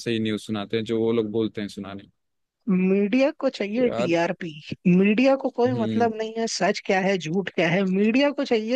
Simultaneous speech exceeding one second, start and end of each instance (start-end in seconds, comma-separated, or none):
none